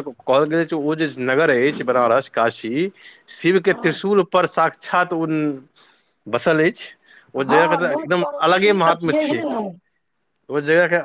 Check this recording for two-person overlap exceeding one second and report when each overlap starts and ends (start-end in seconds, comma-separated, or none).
7.5-9.4